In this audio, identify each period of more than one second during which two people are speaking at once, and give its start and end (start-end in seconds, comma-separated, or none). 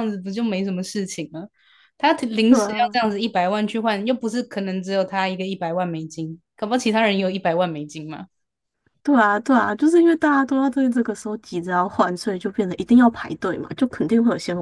none